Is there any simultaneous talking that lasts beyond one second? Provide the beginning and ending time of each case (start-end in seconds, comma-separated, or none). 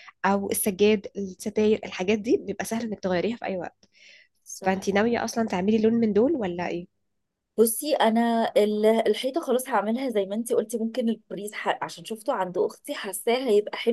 none